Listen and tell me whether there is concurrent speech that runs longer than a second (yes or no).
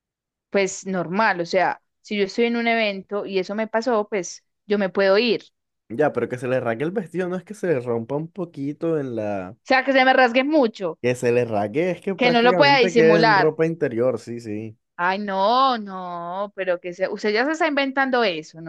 yes